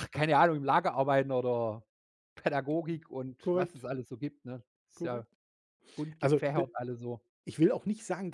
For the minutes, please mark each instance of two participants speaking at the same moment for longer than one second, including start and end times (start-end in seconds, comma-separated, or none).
none